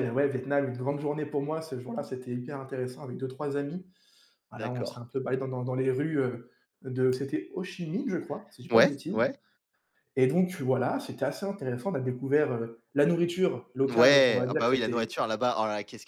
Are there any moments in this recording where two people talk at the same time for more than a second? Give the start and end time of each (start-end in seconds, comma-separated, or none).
13.9-15.1